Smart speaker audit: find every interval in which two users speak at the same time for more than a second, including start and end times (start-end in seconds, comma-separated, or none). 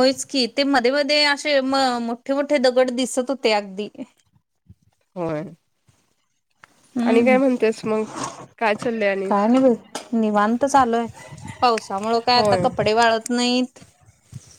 none